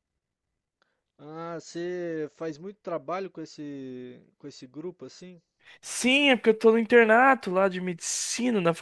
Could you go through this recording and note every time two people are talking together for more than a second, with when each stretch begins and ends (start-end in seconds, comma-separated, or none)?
none